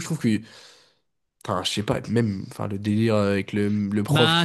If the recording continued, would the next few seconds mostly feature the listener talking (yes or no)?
yes